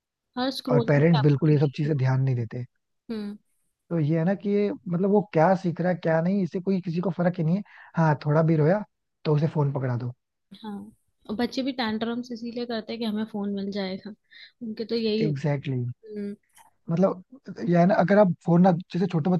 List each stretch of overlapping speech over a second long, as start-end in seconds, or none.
0.7-2.2